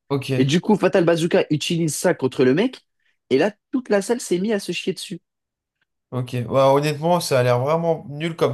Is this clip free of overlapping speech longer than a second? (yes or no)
yes